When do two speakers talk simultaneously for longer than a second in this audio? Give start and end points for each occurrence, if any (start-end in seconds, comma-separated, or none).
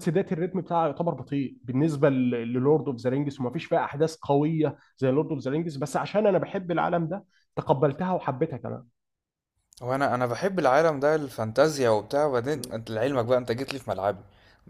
none